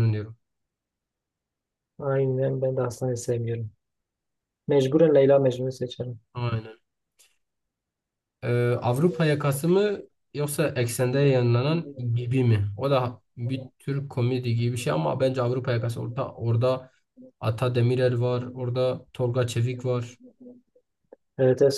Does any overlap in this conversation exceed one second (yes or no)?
no